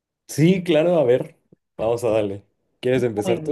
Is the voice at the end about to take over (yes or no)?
yes